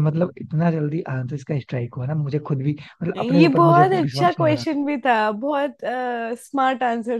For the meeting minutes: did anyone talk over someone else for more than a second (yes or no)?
yes